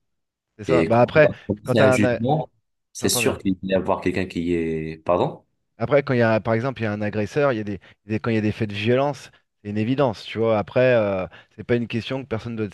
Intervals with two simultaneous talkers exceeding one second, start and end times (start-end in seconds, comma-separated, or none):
0.7-2.2